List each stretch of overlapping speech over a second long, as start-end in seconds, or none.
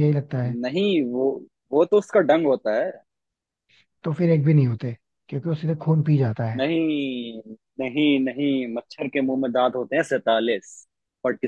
none